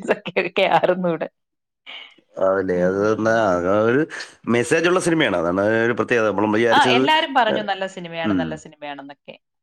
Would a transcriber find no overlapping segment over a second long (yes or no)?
yes